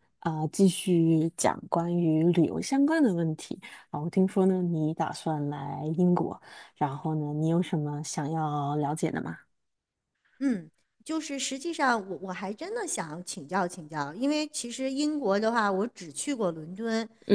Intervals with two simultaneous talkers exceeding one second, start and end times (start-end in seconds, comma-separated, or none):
none